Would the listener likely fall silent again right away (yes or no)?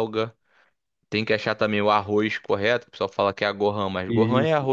yes